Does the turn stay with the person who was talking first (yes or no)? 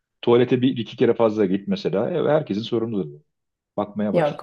no